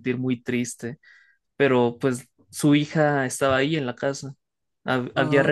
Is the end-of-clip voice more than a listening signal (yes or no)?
no